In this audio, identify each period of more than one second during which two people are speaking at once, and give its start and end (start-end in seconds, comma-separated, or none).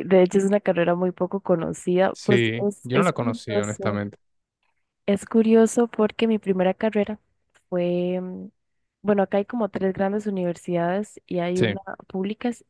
2.1-4.0